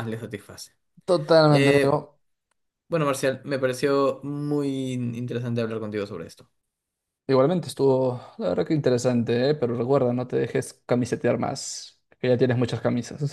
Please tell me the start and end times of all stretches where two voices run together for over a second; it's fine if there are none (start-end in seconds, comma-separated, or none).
none